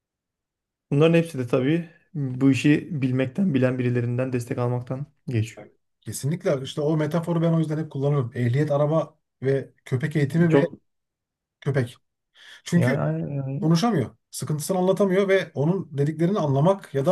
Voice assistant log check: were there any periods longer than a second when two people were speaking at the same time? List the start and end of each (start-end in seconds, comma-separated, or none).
none